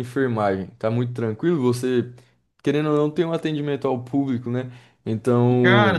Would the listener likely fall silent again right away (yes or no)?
yes